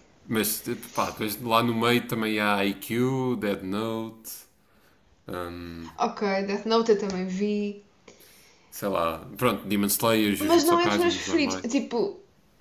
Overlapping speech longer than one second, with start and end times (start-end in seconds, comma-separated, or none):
10.4-11.7